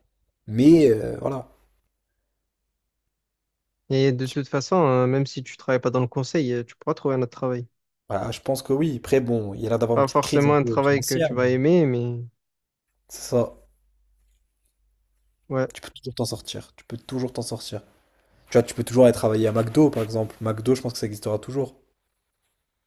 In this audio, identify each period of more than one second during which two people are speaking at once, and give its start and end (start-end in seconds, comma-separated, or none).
9.9-11.5